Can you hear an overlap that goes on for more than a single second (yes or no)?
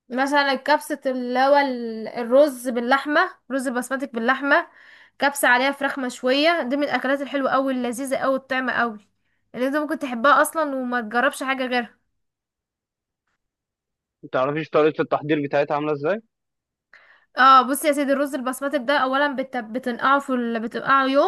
no